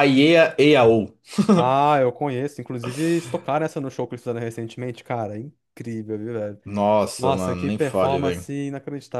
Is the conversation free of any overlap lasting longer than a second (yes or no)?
no